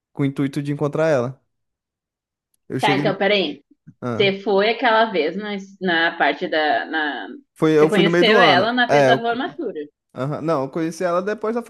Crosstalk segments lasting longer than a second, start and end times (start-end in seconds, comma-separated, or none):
7.8-9.4